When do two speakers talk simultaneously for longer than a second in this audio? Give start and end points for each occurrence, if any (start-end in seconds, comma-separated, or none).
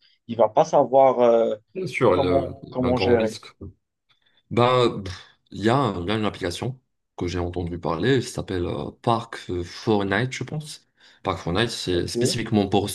2.1-3.4